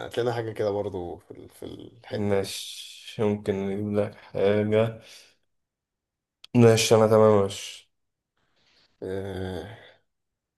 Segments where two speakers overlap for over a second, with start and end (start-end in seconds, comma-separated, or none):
none